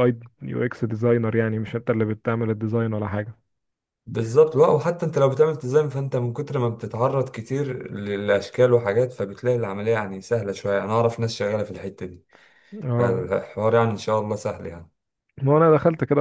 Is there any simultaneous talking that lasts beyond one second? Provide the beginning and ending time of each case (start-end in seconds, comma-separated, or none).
none